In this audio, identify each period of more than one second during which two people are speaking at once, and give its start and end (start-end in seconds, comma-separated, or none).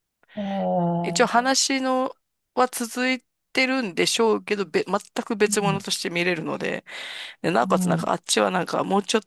none